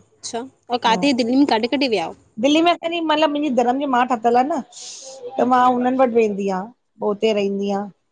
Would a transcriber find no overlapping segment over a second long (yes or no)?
yes